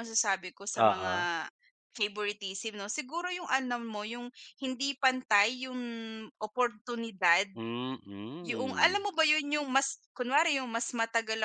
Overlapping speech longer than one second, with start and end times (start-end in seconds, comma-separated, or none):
none